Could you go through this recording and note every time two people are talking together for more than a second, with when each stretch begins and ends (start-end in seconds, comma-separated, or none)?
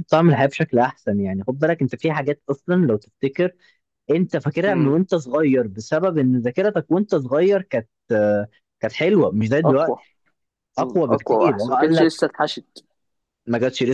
10.8-12.2